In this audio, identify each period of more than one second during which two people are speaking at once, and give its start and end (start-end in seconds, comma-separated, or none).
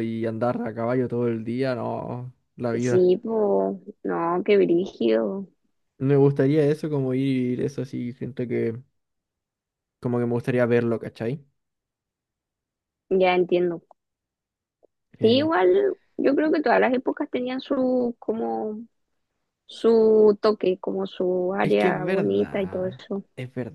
21.6-23.2